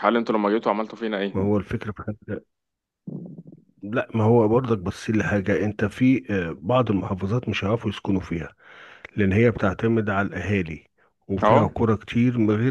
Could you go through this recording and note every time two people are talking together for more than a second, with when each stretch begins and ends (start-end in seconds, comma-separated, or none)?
none